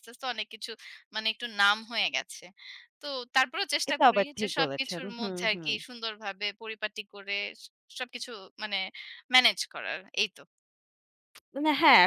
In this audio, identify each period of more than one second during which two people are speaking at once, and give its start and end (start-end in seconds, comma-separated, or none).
3.9-5.7